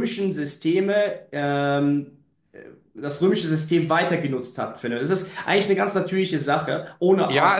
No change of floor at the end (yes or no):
no